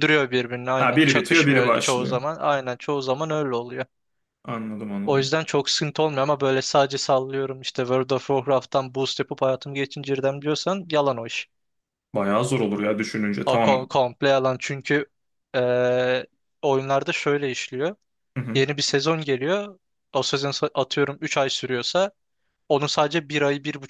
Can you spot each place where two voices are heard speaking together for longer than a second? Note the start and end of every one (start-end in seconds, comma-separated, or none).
0.8-2.2